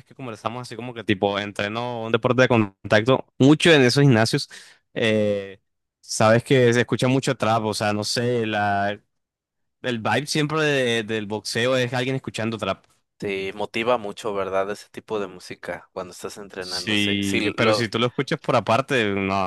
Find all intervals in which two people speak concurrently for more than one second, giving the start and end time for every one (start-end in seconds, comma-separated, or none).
16.6-17.9